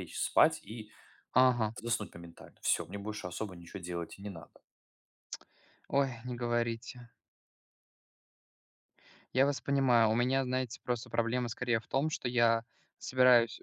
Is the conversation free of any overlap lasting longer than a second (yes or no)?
yes